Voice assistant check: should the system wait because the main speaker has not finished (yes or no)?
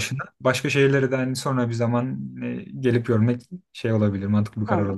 no